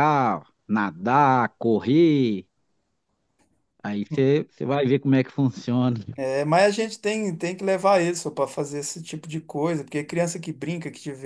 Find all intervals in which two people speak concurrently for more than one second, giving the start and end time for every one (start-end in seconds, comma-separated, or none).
none